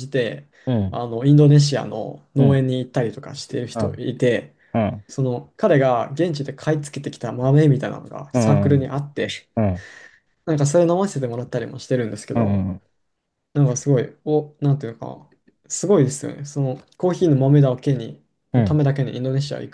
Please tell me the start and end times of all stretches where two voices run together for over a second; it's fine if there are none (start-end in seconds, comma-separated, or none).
none